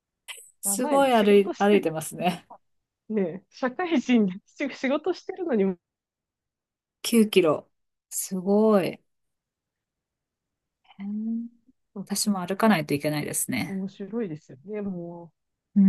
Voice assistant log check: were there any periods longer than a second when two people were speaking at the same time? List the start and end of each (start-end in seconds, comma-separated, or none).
0.6-1.9